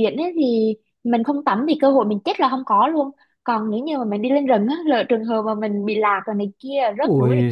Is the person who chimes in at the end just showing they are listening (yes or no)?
no